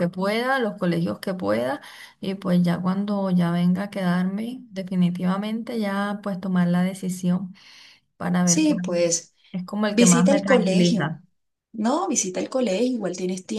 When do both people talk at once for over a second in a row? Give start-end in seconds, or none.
9.9-11.1